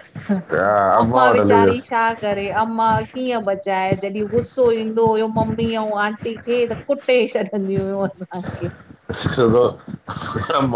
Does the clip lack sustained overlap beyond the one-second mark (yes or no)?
no